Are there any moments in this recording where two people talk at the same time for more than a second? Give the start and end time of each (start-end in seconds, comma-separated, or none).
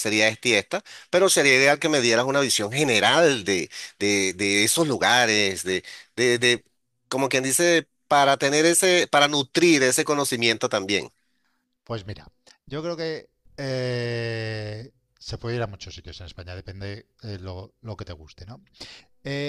none